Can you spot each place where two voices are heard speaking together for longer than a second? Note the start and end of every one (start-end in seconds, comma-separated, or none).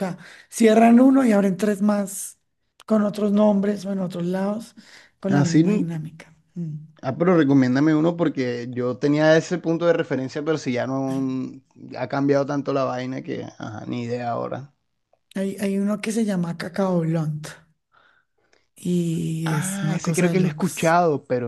19.4-21.0